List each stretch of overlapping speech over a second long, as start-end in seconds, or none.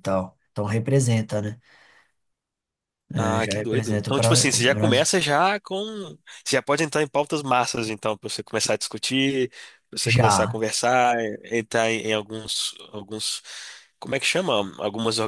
3.2-5.1